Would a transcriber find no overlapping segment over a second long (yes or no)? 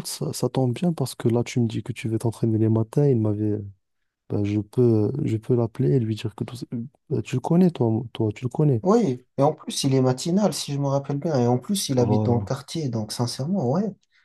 yes